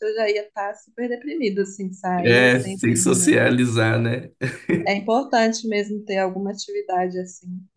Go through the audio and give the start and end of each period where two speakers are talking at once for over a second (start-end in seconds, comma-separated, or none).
2.2-3.5